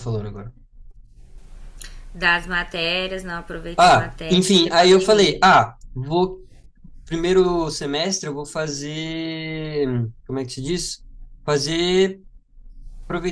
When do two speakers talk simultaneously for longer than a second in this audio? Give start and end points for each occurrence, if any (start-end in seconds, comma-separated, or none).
3.8-5.5